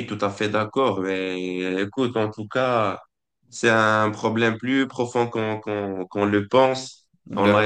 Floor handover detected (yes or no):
no